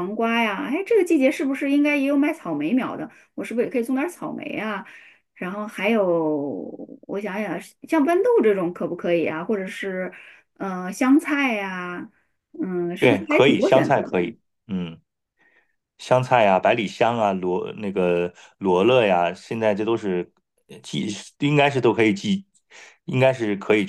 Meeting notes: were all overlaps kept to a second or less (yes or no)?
no